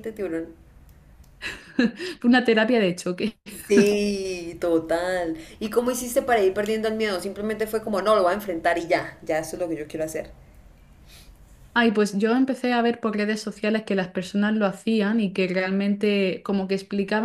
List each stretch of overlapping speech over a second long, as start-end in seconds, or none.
none